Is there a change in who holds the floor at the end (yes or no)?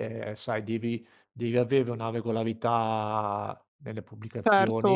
yes